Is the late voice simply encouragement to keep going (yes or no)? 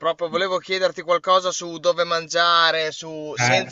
yes